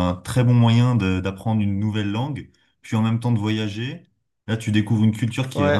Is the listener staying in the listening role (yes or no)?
no